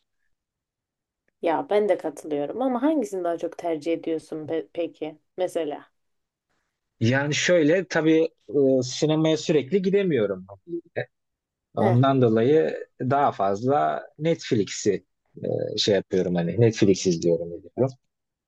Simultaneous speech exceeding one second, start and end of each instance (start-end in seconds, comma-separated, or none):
none